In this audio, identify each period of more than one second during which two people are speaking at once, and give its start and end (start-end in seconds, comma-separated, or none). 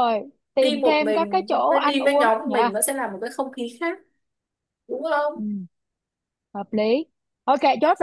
0.6-2.7